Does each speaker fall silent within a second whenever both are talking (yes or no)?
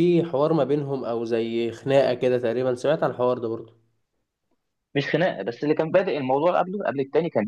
yes